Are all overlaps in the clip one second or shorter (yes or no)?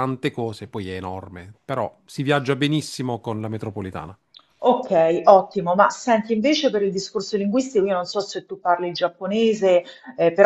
yes